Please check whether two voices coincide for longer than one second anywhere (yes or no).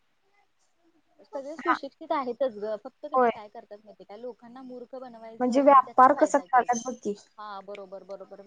yes